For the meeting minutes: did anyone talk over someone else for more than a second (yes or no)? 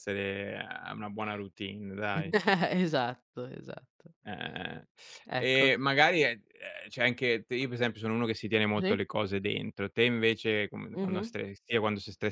no